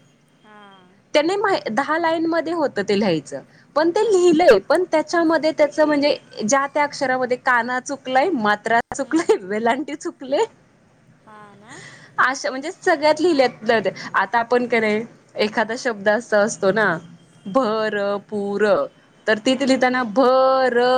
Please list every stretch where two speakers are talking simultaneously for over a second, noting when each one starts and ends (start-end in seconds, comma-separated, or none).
none